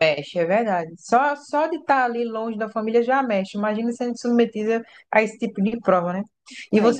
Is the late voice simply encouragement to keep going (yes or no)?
yes